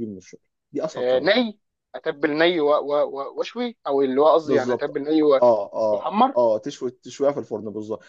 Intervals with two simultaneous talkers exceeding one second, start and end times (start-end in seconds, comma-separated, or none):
none